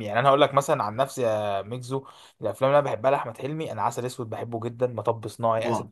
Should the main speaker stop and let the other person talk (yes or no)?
no